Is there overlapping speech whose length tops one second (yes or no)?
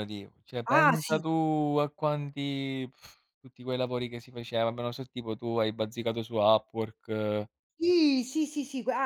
no